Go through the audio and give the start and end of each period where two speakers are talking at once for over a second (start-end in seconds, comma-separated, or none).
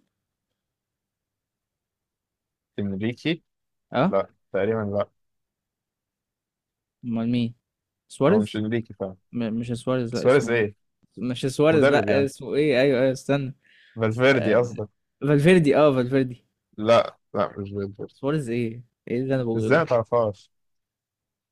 none